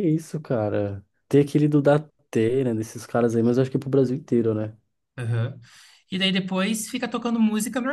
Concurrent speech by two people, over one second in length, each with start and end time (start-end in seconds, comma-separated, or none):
none